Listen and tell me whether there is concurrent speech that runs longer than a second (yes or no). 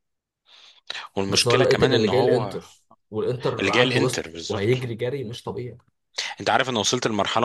yes